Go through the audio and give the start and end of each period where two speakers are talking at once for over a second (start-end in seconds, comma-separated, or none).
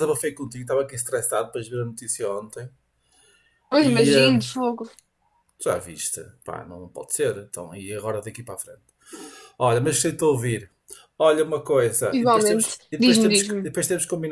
12.1-13.7